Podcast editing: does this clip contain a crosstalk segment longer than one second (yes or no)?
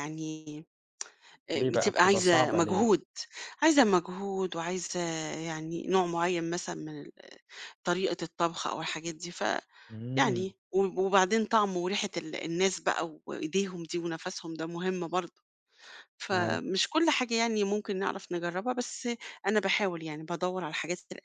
yes